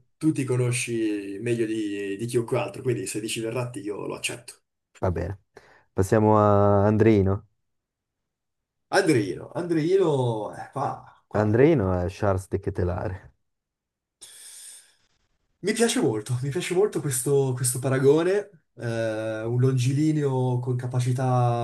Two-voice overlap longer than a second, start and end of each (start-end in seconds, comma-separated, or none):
none